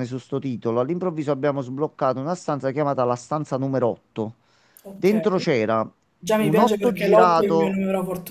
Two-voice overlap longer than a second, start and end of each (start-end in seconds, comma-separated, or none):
6.4-7.8